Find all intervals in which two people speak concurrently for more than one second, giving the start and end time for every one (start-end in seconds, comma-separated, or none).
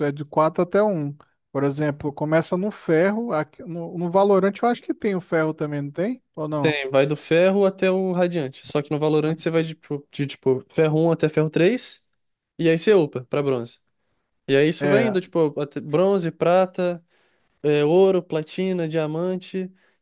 none